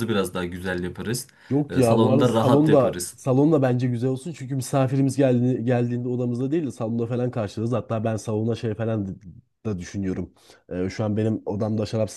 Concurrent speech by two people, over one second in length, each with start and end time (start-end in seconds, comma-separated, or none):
1.7-3.2